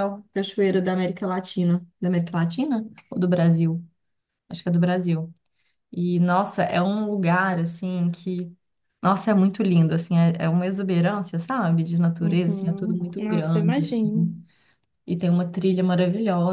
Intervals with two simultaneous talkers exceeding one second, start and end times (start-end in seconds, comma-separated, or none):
12.2-14.3